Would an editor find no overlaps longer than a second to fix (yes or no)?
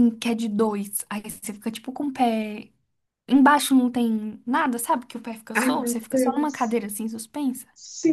no